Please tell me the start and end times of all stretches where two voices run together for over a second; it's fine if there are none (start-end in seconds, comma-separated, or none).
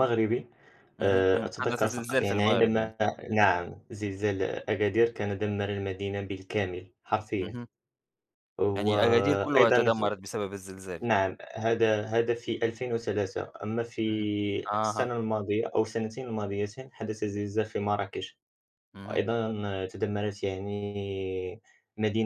1.0-2.9, 8.8-10.0